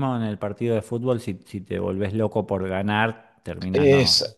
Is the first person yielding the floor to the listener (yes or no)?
yes